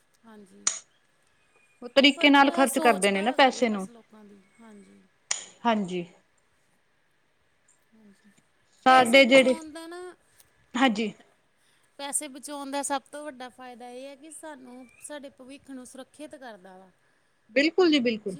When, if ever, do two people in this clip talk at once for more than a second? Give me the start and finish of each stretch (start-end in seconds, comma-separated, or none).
2.0-3.9